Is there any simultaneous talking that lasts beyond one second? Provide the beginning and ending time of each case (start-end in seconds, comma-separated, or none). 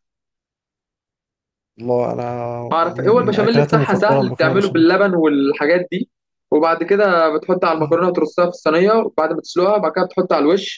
2.7-4.9